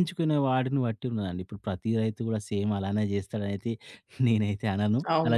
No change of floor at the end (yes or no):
no